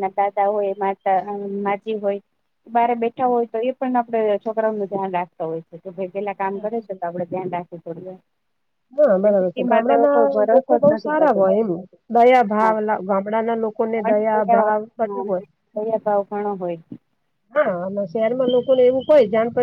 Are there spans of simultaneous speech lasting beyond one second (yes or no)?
yes